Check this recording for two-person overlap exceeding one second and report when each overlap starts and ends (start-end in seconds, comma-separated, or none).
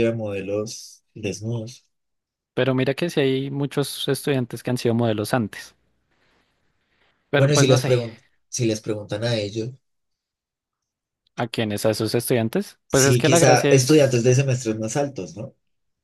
12.9-14.3